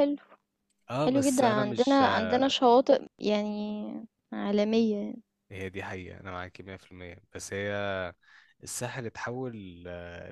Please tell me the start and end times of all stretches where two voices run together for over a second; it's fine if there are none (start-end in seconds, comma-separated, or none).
1.0-2.4